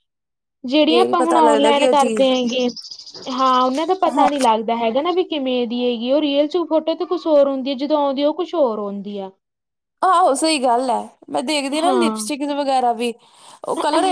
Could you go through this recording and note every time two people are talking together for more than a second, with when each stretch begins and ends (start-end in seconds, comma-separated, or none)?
0.9-2.3